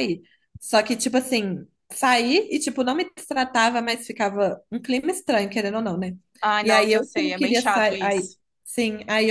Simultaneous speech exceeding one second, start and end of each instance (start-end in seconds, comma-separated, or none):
6.6-8.3